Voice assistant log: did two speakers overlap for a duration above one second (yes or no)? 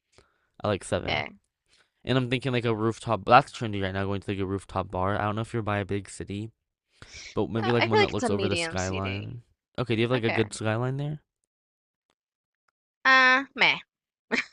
yes